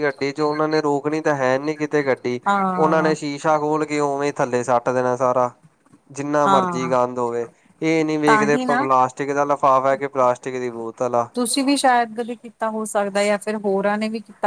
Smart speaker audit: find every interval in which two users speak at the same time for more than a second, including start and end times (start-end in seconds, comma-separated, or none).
none